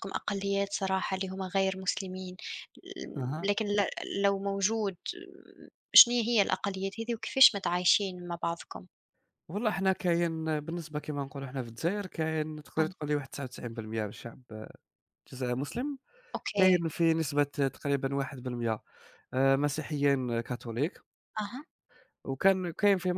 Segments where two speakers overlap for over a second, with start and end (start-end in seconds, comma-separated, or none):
none